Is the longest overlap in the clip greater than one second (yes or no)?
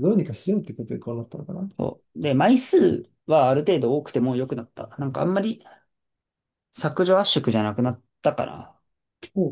no